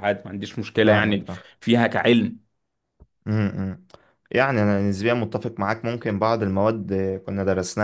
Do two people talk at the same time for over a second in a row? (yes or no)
no